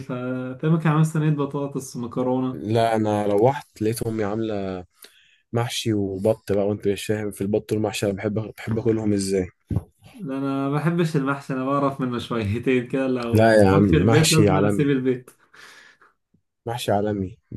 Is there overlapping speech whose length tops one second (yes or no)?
yes